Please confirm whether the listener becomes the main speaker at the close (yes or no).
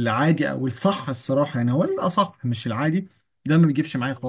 no